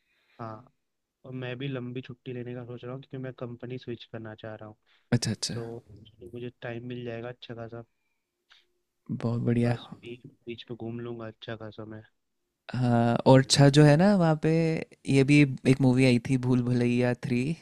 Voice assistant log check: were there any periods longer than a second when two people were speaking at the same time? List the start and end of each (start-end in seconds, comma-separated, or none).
none